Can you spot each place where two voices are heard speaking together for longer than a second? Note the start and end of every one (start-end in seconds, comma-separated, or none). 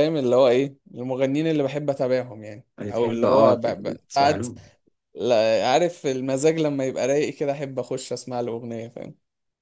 2.8-4.5